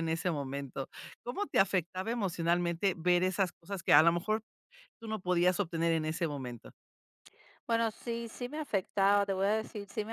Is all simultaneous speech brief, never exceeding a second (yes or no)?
yes